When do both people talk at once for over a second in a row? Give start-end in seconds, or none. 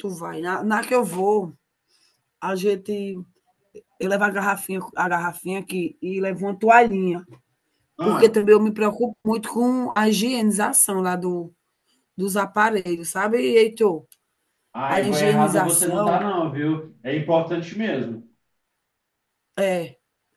14.9-16.2